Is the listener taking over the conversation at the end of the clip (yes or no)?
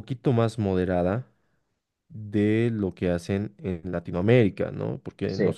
no